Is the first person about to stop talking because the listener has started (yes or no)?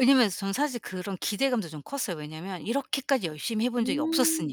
yes